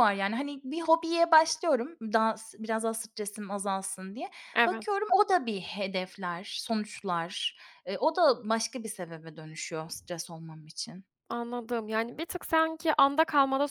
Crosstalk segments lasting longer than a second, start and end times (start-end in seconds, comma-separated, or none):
none